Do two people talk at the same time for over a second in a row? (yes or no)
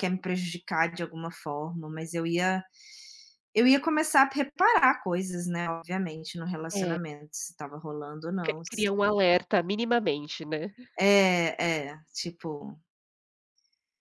no